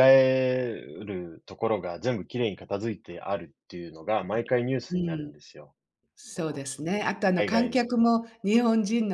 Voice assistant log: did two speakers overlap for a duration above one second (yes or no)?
no